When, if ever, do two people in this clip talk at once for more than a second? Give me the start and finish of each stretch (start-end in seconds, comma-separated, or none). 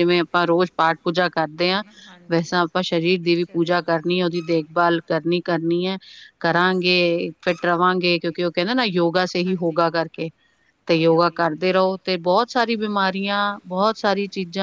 none